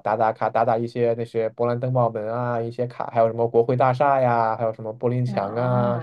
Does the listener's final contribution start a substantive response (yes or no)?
yes